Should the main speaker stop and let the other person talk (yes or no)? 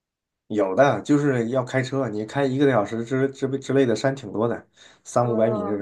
yes